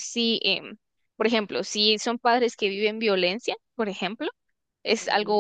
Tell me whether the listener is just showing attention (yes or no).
yes